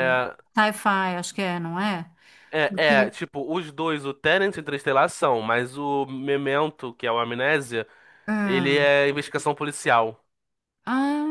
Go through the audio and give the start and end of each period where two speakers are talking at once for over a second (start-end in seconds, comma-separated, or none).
none